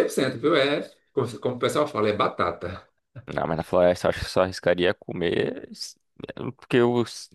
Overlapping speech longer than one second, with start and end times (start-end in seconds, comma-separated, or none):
none